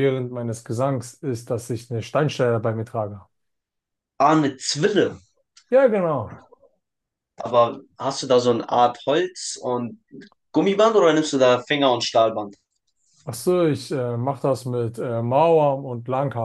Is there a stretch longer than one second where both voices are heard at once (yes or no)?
no